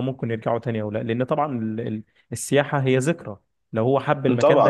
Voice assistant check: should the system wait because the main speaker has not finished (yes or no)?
no